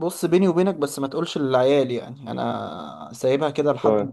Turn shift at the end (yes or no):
no